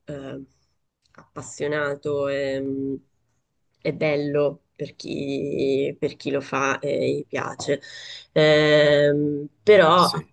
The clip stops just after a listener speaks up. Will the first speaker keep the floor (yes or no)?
yes